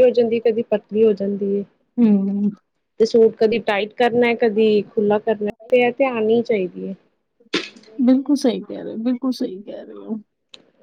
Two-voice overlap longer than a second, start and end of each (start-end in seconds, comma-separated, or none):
none